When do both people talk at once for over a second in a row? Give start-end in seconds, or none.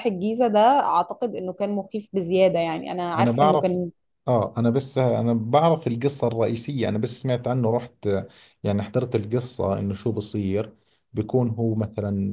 none